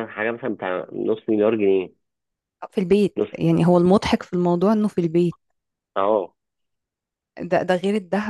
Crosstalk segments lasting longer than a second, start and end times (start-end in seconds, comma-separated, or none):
none